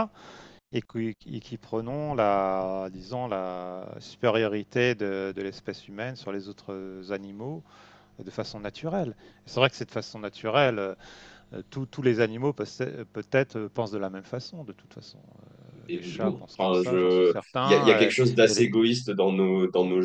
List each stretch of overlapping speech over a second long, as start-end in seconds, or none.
15.9-18.7